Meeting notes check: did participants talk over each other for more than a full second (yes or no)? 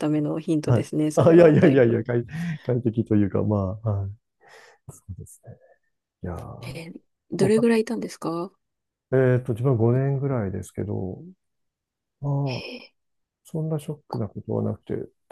yes